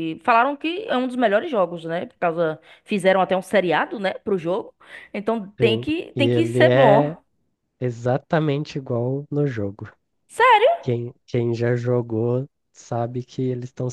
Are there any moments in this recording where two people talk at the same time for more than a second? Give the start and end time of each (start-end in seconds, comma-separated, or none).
5.6-7.2